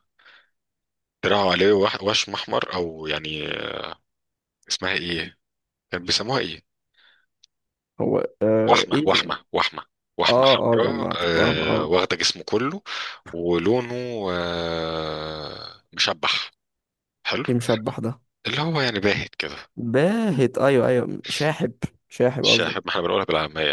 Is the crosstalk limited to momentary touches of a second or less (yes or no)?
no